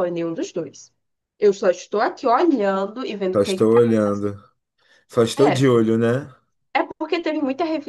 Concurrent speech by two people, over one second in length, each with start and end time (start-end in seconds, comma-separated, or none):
none